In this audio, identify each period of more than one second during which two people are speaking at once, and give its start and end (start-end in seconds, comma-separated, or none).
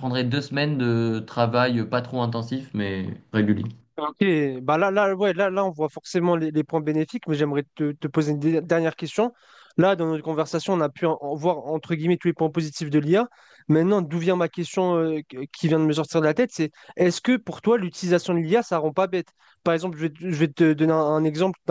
none